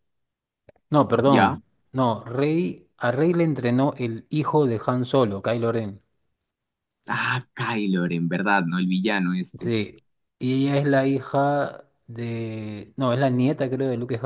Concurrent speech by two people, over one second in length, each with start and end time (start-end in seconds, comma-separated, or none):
none